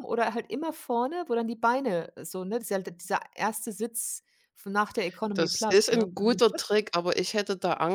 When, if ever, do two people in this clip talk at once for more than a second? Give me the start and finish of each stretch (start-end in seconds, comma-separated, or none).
5.3-6.8